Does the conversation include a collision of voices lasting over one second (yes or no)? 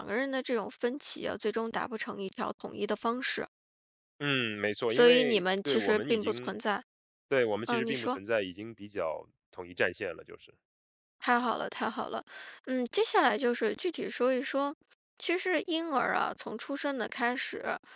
yes